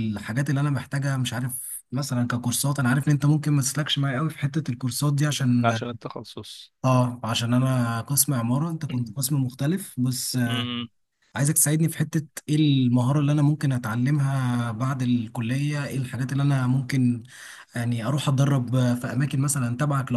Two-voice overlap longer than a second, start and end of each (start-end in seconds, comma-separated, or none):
none